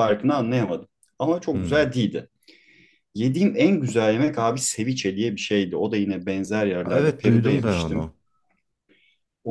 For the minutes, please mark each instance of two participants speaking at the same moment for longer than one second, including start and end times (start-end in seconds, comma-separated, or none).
6.9-8.1